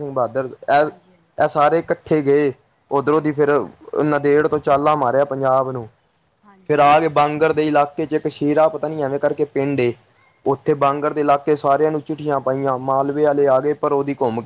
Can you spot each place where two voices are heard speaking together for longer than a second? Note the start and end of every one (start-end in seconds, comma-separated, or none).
none